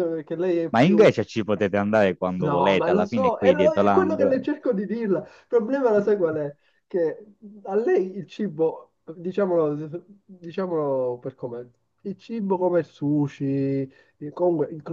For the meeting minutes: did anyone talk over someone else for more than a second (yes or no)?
yes